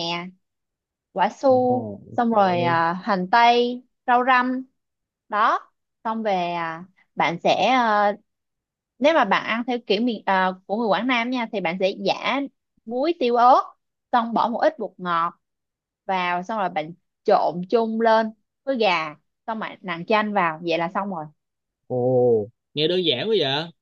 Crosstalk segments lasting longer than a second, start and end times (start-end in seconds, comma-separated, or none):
1.4-2.8